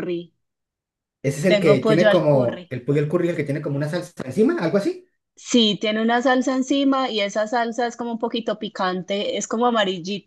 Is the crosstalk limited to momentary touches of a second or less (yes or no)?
no